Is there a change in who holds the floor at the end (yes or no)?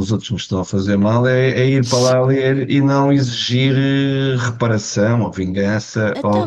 yes